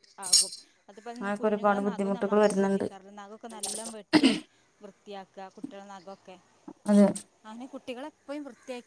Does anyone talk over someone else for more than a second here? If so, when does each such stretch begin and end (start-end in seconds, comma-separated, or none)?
1.2-2.9